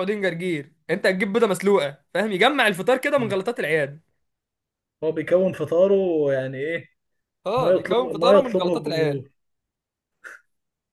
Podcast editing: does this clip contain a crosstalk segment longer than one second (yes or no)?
yes